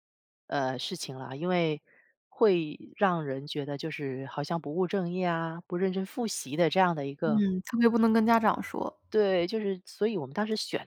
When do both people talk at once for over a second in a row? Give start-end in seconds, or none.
none